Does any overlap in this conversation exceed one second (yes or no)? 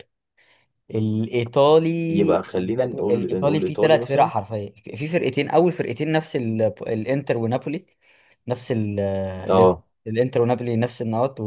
yes